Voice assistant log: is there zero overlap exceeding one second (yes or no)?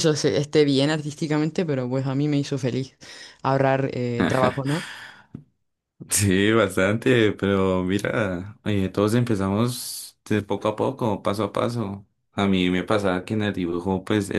yes